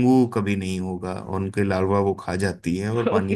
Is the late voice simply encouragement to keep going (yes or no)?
no